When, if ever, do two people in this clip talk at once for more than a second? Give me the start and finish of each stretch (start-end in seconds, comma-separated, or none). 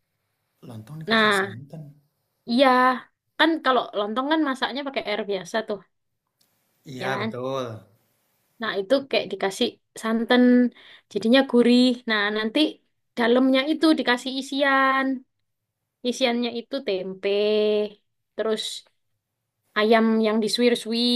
none